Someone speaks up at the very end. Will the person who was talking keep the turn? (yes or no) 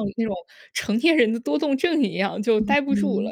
no